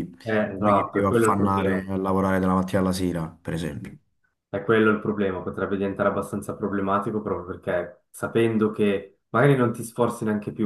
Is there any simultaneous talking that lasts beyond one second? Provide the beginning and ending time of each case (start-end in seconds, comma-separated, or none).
0.6-1.8